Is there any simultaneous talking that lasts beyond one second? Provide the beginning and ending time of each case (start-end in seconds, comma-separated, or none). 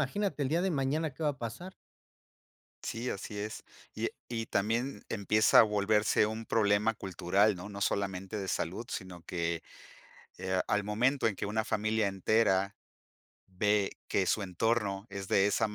none